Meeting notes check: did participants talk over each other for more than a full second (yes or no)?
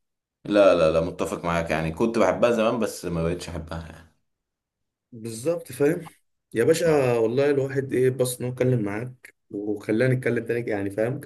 no